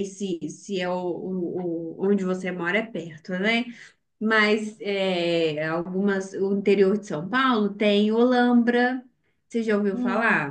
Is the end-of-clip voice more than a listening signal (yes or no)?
yes